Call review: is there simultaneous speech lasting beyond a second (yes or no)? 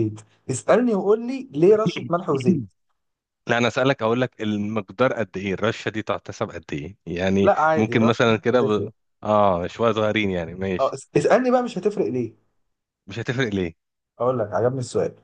yes